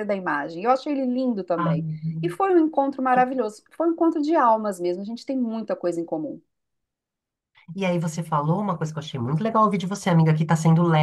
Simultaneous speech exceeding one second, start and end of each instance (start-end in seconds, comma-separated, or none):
none